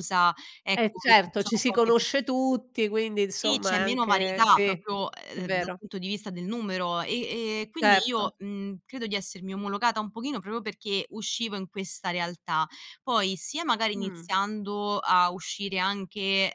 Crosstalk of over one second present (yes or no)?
yes